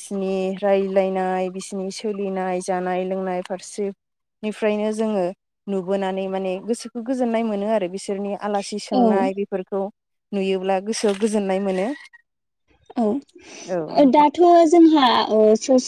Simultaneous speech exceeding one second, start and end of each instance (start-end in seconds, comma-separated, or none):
none